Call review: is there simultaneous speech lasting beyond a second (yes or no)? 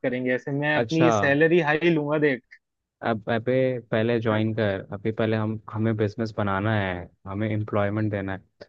no